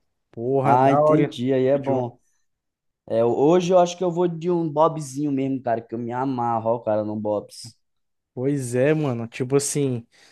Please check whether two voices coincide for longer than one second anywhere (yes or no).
yes